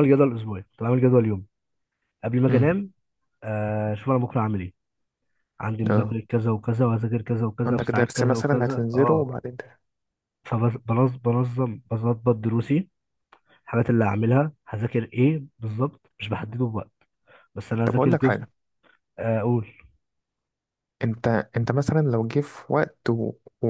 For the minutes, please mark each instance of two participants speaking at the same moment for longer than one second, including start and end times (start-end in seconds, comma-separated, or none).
7.7-9.3